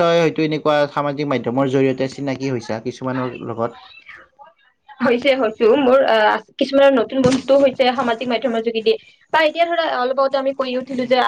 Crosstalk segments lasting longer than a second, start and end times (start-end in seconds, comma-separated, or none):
none